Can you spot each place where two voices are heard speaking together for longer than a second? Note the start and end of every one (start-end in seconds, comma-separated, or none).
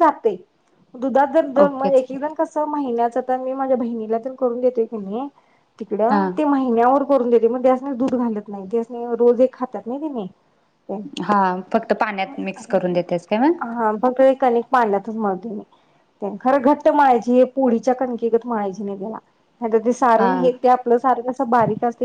none